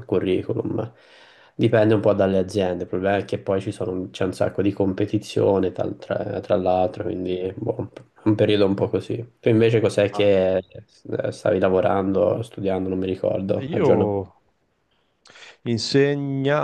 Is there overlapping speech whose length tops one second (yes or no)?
no